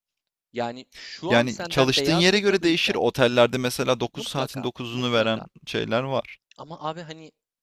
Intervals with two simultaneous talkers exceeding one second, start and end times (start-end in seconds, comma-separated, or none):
1.3-3.0, 4.1-5.5